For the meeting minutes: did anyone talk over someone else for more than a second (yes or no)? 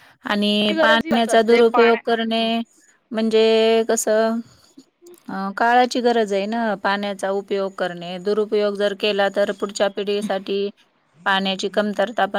yes